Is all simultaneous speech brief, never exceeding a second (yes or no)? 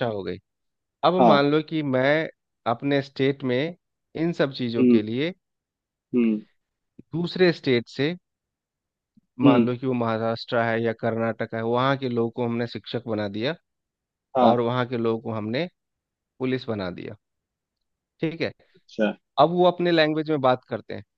yes